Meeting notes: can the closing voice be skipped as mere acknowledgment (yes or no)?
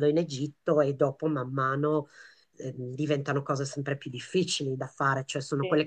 yes